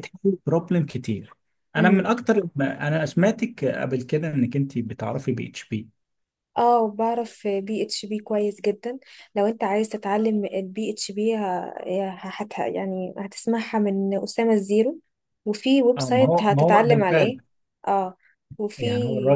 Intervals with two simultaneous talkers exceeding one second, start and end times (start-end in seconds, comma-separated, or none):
16.0-17.4